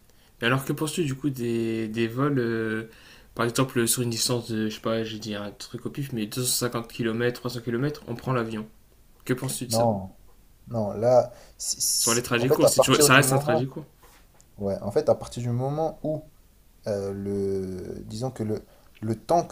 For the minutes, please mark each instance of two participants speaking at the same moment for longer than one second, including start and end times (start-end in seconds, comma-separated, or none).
12.0-13.6